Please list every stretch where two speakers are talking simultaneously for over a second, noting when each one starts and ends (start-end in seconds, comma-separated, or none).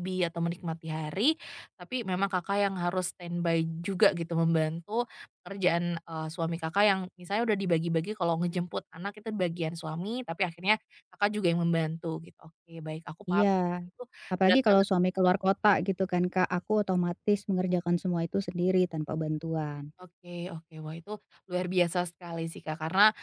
none